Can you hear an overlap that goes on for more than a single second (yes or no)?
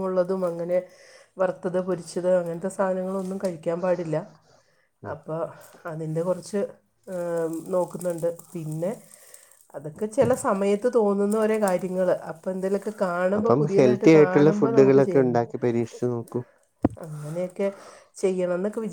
yes